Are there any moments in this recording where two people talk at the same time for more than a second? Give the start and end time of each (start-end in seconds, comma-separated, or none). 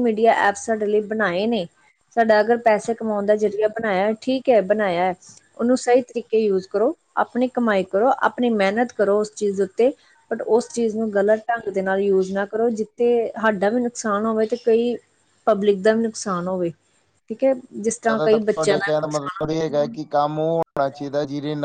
18.1-19.9